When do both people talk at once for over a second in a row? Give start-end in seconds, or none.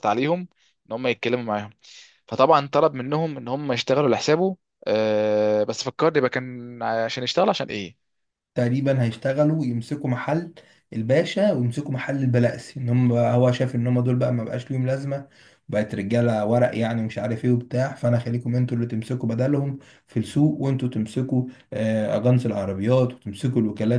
none